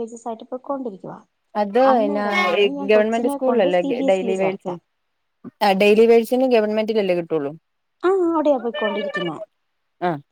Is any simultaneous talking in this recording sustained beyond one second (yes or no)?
yes